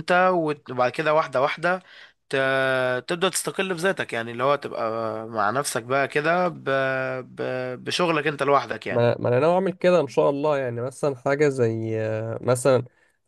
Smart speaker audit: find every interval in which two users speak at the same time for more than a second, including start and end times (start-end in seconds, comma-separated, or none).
none